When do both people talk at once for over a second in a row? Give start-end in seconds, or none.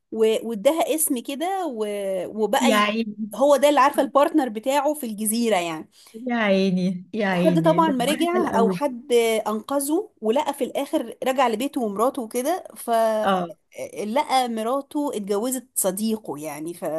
7.3-8.8